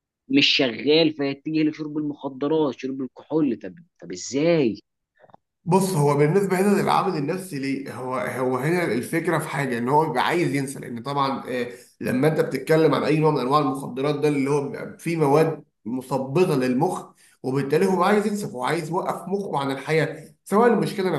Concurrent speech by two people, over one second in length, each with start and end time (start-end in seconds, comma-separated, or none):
none